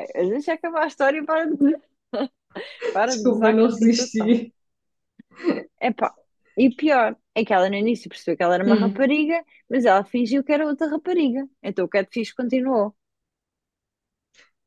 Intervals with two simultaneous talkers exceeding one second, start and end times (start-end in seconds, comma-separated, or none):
3.1-4.4